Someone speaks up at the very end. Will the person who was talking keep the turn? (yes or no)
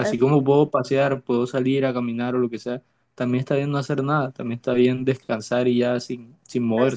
no